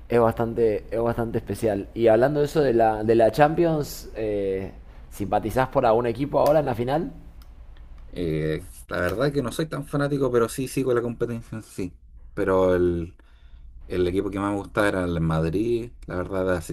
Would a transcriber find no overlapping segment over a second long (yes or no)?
yes